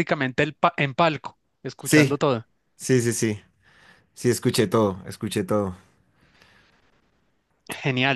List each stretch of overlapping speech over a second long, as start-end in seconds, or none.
none